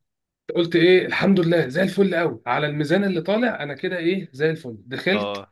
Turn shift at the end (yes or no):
no